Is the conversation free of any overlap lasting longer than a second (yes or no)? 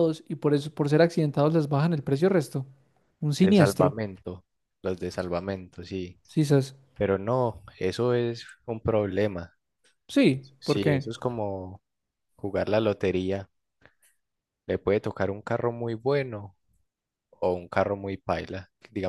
yes